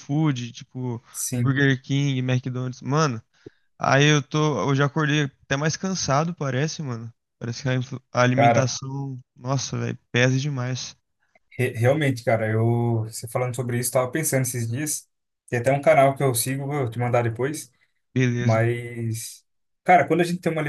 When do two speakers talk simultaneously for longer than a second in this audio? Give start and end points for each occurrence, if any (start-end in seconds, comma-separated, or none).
none